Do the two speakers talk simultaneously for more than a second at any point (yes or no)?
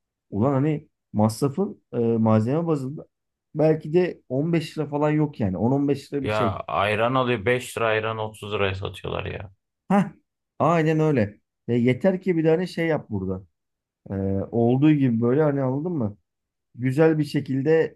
no